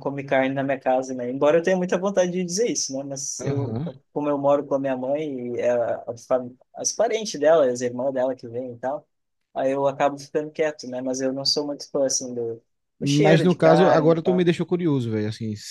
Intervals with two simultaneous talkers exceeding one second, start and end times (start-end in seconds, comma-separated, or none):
13.0-14.5